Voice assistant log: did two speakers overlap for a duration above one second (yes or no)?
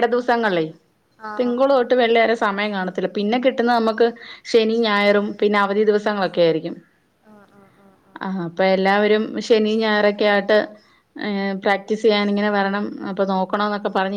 no